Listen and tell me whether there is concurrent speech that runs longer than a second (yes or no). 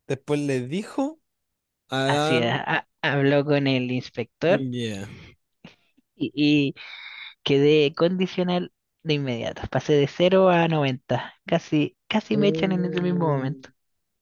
yes